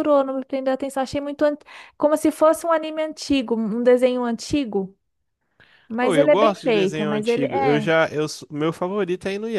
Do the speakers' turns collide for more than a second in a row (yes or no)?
yes